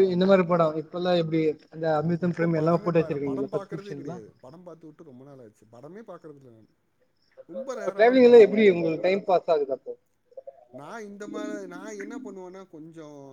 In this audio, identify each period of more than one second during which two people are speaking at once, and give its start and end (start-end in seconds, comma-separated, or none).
2.3-4.2